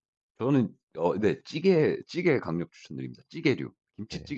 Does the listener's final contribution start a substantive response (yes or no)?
yes